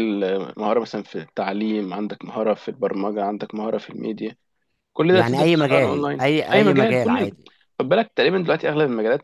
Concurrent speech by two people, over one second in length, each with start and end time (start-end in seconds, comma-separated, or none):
5.1-7.3